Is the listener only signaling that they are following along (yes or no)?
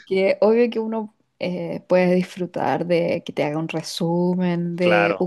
yes